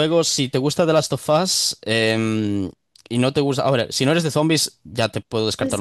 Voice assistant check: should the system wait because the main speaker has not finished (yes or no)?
no